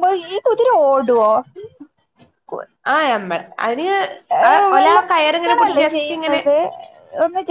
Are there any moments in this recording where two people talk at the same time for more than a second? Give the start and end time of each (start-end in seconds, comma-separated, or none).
4.8-6.4